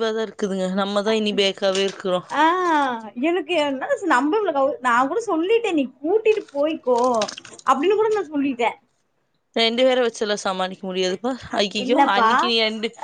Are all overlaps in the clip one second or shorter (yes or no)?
yes